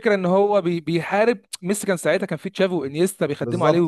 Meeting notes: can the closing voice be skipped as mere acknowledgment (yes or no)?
no